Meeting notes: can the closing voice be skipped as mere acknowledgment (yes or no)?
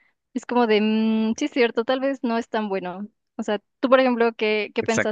no